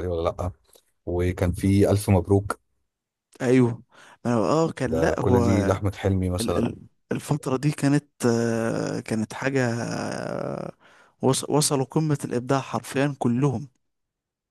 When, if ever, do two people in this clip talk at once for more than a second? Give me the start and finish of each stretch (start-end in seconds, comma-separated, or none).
none